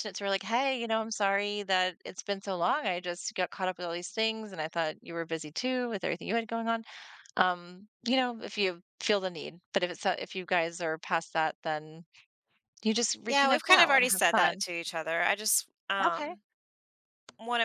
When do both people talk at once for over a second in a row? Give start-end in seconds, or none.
13.3-14.6